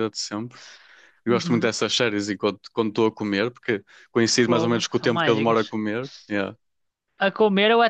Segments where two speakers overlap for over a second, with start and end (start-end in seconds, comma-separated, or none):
4.4-5.7